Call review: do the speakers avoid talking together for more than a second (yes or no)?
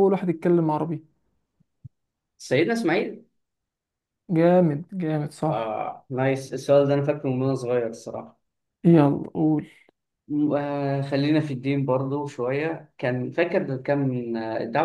yes